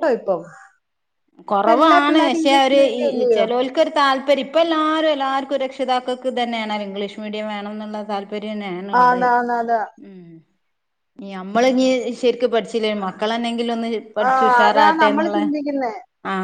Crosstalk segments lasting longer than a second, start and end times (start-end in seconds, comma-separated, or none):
1.6-3.4